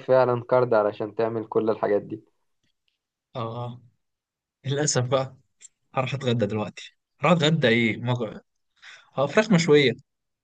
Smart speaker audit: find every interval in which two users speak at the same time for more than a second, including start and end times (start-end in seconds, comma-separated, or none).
none